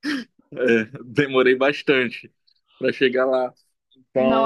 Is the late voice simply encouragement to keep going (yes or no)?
no